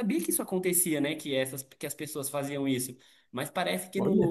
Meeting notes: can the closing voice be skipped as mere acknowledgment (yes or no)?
yes